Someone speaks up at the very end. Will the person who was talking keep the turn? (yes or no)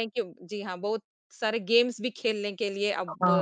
yes